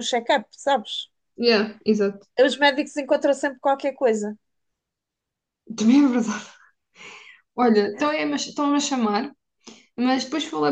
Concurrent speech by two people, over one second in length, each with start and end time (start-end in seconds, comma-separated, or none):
none